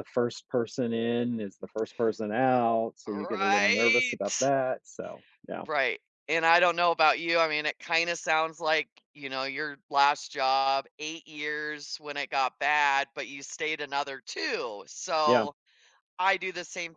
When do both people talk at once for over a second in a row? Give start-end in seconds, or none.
3.1-4.5